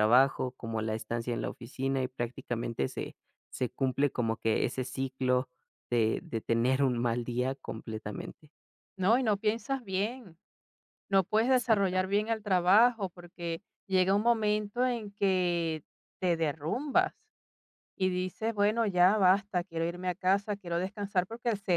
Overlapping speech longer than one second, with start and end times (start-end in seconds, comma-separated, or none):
none